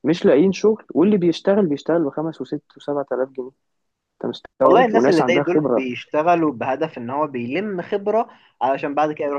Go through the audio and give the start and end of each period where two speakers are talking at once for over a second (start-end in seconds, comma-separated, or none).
4.6-5.8